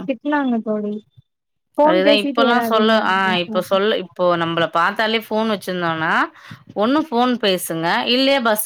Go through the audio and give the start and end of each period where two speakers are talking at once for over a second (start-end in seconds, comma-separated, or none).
1.9-3.8